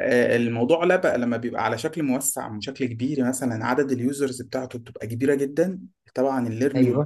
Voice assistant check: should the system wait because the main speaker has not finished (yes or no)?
yes